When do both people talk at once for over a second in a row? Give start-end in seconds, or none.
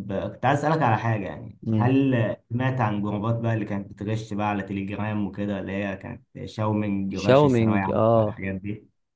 7.1-8.4